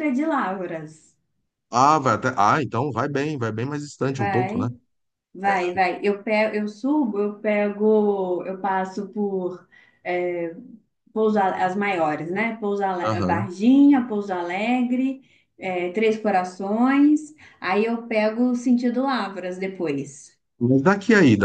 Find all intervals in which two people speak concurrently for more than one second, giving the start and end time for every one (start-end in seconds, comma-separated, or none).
none